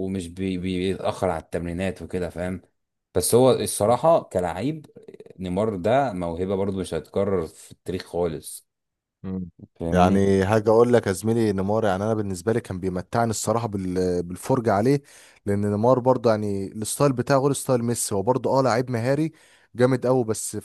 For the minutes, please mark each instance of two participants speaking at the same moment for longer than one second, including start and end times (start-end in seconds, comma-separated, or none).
none